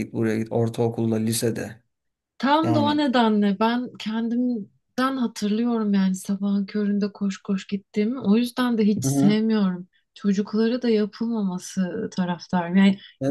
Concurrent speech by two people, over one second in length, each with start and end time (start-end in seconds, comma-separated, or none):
none